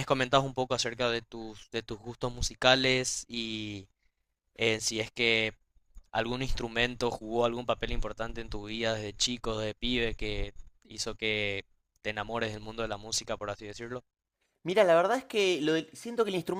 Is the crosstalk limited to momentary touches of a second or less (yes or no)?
yes